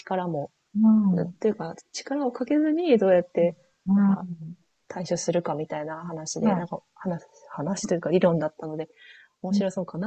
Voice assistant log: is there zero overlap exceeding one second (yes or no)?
yes